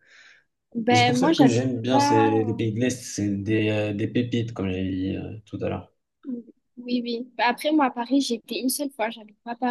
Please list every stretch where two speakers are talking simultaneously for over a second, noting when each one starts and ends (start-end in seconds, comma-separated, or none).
0.9-2.3